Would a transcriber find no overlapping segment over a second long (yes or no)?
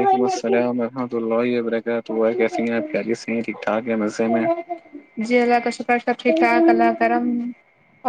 yes